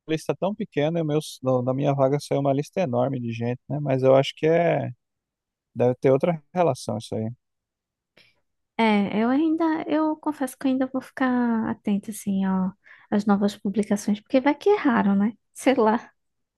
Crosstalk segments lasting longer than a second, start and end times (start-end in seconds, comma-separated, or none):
none